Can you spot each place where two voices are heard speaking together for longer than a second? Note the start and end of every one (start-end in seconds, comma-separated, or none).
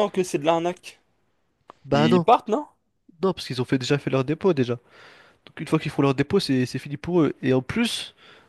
none